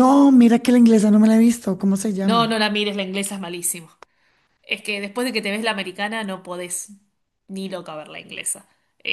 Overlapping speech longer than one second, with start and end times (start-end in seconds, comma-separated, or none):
none